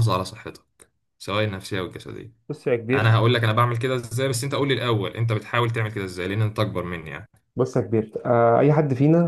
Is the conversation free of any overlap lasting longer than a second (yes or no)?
yes